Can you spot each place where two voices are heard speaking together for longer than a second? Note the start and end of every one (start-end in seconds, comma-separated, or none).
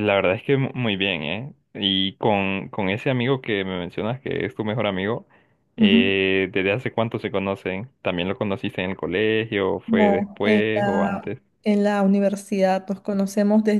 9.8-11.4